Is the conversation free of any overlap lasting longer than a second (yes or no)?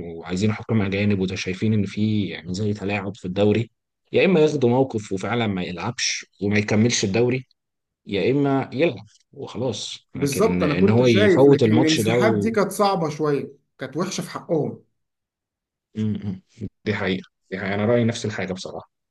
no